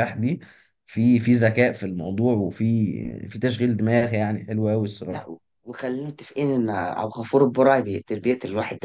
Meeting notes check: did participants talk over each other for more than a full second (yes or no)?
no